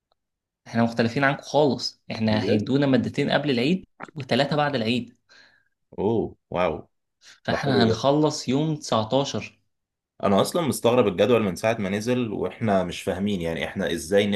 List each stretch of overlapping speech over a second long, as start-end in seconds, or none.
none